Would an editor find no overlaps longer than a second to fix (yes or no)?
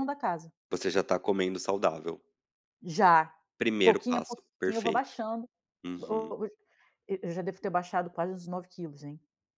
no